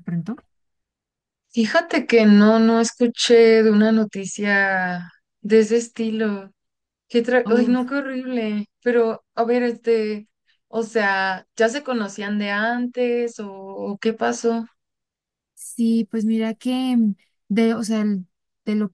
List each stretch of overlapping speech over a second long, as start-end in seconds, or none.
none